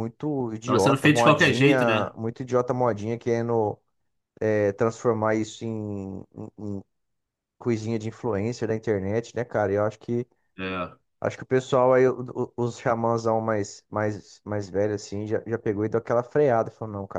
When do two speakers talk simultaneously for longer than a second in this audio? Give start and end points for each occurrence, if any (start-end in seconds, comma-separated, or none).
0.7-2.1